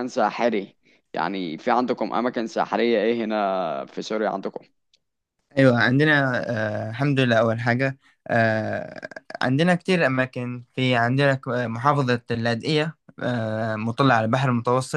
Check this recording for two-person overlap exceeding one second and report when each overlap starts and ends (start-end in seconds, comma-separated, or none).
none